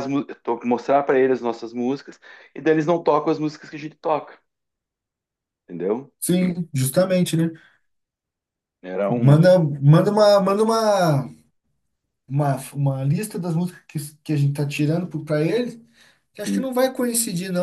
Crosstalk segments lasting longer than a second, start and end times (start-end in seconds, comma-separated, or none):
none